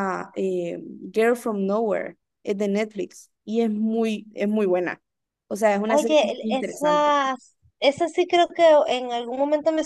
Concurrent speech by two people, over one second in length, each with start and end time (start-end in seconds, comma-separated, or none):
5.8-7.2